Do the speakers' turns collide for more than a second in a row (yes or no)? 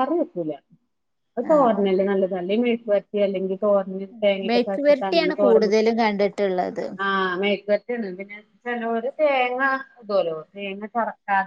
yes